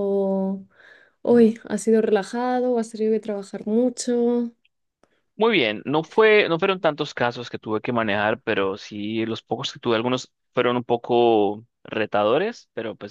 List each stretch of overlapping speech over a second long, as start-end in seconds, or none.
none